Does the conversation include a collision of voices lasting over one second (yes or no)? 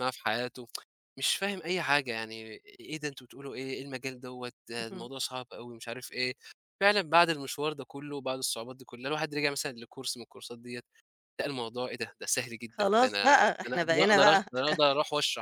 yes